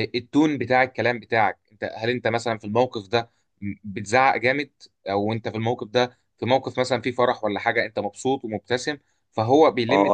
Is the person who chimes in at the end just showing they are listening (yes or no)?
no